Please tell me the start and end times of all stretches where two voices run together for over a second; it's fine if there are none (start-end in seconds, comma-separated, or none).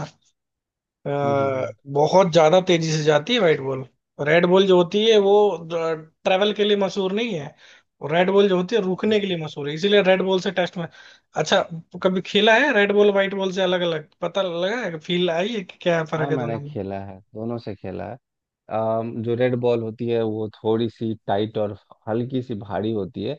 none